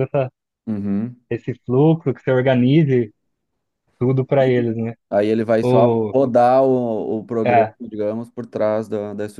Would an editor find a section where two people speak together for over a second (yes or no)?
no